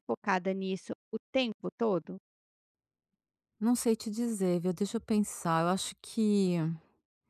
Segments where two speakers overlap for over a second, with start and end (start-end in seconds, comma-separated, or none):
none